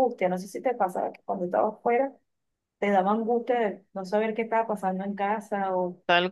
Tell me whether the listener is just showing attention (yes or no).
no